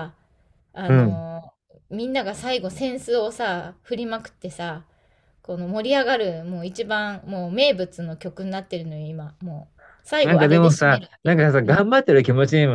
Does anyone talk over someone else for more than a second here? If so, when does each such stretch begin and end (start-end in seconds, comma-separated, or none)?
10.2-11.8